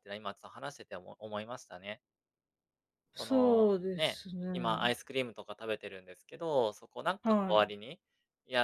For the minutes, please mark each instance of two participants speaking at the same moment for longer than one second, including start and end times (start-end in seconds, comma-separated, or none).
3.2-4.9